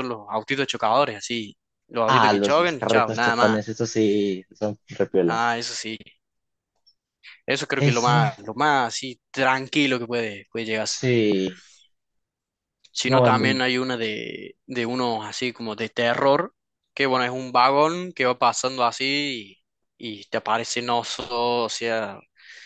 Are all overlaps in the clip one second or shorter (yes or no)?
no